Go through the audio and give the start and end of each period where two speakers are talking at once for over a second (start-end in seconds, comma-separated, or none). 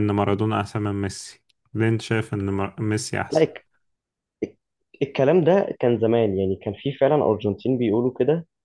none